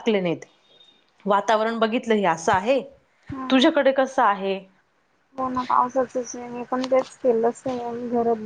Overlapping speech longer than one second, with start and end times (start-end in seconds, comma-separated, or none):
none